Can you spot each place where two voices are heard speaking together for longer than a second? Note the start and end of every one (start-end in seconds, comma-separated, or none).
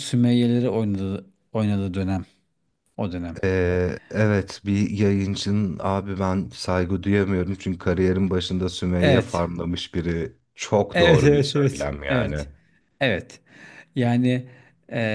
10.9-12.5